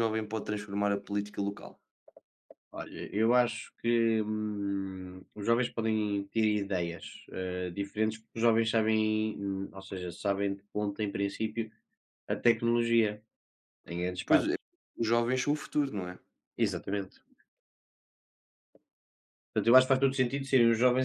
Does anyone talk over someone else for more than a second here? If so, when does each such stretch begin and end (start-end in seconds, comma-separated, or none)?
none